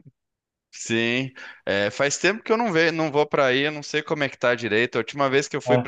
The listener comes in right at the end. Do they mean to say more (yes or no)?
no